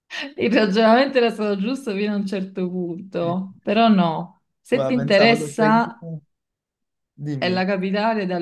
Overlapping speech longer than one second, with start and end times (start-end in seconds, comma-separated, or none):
4.7-6.1